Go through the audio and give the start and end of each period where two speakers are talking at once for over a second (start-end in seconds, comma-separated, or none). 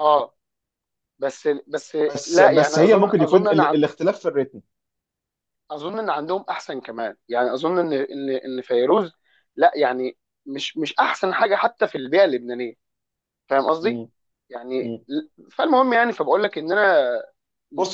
2.0-3.8